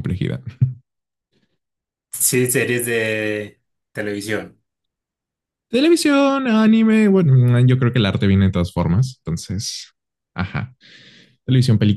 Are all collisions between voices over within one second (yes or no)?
yes